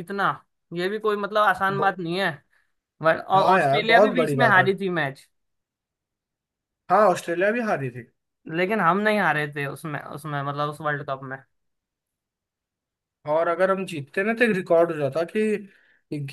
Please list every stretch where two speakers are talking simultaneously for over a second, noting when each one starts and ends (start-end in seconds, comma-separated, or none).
3.3-4.7